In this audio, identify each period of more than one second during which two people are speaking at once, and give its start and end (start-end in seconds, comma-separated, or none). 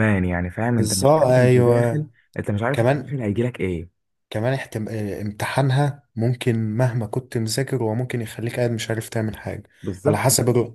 0.7-2.1